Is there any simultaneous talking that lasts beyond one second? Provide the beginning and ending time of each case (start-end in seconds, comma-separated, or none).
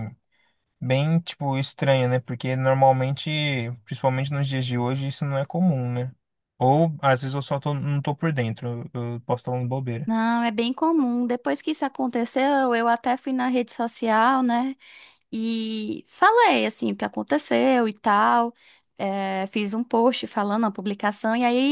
none